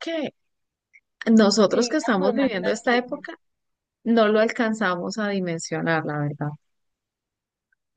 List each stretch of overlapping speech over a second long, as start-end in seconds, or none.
1.6-3.4